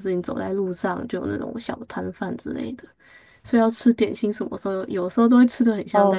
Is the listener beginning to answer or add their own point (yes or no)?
yes